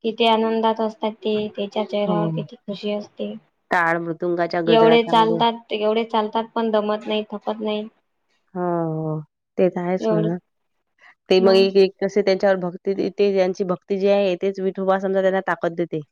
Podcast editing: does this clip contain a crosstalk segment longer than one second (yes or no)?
no